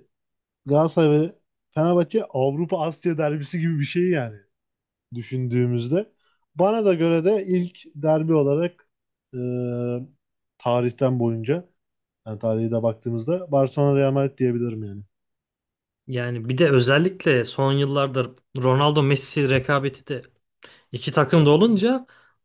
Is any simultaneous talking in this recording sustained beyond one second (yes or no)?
no